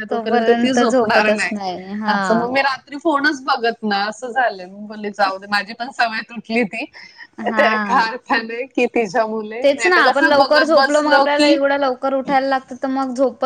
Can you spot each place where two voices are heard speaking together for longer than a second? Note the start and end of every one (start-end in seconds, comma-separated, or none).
9.6-11.6